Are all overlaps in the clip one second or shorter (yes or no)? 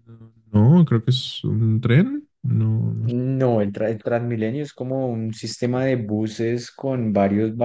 yes